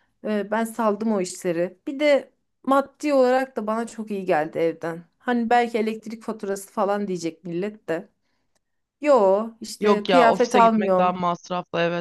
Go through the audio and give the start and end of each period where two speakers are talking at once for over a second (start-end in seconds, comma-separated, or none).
9.8-11.2